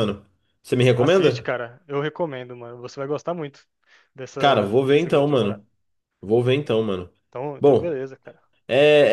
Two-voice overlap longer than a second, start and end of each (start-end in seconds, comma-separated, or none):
4.4-5.6